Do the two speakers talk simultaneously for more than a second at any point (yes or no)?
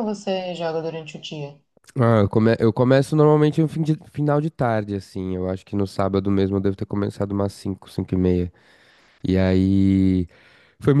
no